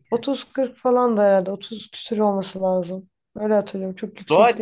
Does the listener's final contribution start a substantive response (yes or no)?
yes